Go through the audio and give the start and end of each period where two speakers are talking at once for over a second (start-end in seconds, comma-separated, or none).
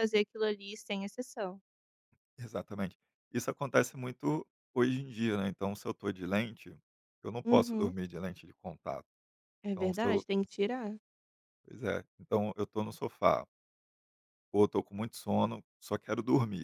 none